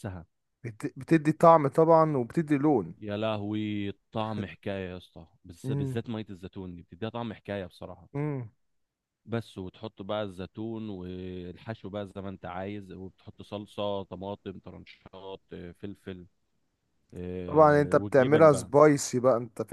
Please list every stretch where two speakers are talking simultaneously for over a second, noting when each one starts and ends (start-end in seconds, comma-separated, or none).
17.5-18.7